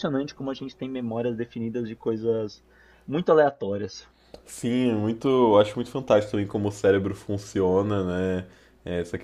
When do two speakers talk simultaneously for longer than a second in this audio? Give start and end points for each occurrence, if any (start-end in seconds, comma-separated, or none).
none